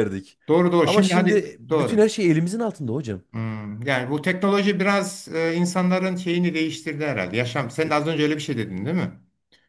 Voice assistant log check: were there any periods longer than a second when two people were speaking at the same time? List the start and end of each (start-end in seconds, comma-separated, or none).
0.8-2.1